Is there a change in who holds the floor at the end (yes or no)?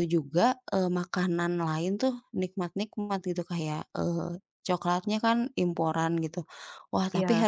no